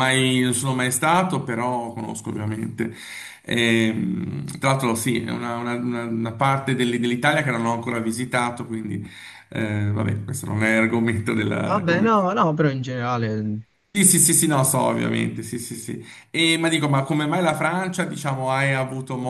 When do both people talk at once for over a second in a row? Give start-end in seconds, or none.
none